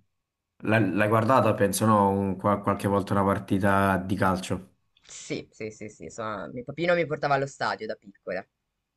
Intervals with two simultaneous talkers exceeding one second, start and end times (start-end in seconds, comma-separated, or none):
none